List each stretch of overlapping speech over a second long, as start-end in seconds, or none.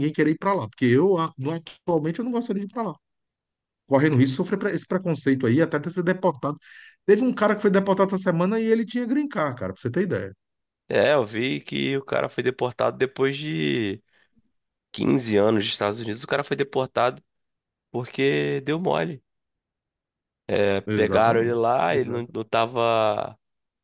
20.9-22.3